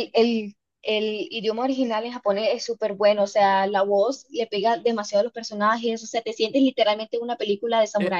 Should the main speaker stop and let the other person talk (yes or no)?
yes